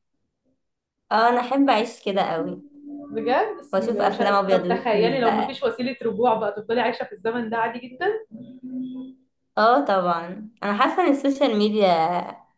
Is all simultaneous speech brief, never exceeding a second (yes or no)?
no